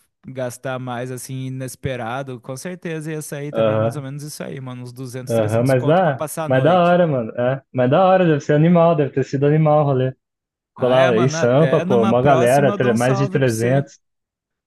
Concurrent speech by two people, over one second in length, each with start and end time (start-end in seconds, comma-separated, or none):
5.3-7.0, 10.8-13.8